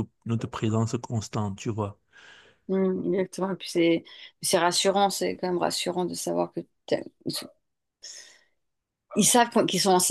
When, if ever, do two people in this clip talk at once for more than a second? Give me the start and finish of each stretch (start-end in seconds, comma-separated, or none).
none